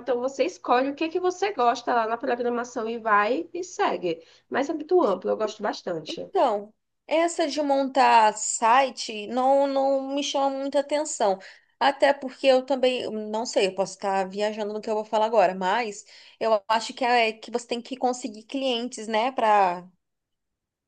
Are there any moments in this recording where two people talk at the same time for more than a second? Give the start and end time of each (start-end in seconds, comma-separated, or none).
none